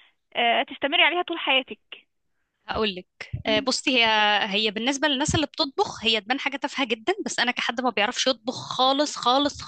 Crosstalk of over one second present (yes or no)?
no